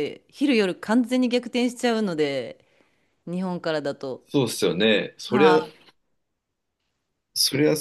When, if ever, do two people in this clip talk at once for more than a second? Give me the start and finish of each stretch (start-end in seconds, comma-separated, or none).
none